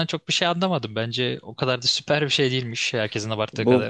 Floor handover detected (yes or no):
yes